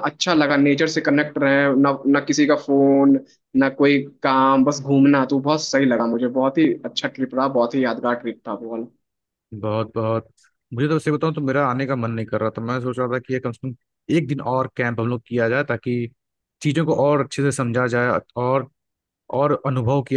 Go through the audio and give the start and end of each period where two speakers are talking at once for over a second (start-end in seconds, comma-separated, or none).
none